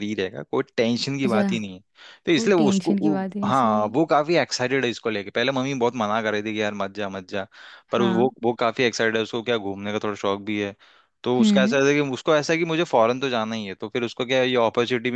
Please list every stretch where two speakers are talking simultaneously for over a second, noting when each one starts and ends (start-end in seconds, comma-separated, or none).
2.3-3.9